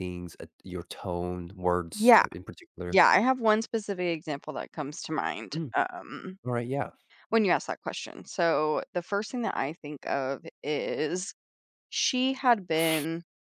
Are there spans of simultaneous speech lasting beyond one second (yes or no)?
no